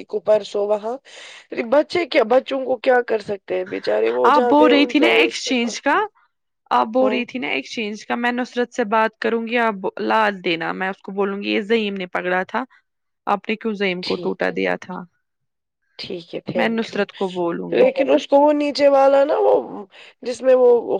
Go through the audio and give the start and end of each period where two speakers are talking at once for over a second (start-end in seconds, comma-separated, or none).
4.3-5.9